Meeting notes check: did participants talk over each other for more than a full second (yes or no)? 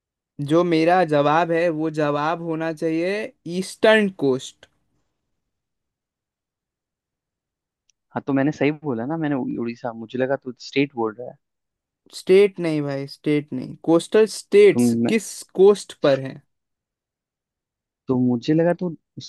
no